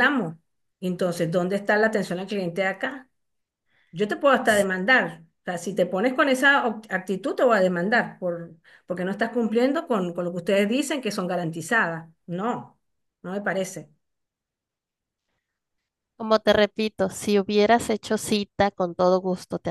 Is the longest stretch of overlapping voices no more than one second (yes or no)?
yes